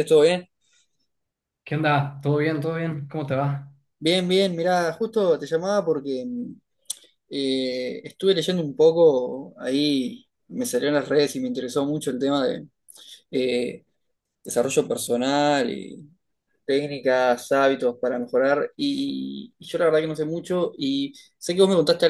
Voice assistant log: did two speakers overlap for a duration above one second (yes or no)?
no